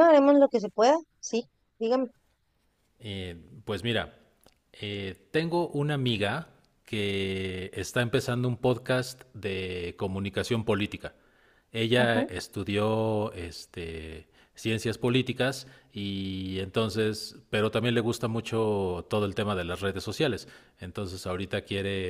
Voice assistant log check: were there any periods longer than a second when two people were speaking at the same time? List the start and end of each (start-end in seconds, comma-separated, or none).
none